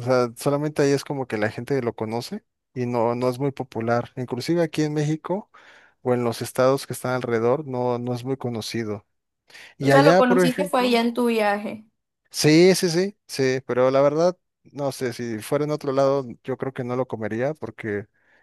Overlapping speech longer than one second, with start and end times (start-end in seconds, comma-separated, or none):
9.8-11.0